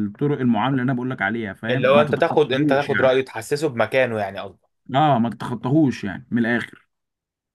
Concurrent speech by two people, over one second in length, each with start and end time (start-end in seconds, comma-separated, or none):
1.7-3.1